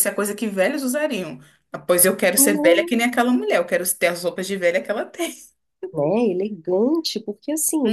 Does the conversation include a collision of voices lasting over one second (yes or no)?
no